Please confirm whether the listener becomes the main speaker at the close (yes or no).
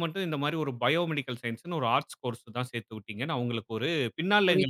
no